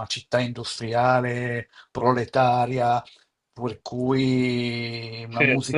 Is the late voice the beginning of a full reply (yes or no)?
yes